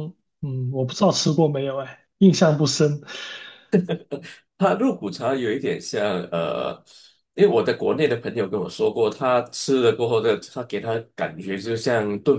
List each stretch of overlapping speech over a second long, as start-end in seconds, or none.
none